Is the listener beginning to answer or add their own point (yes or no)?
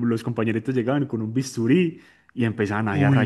no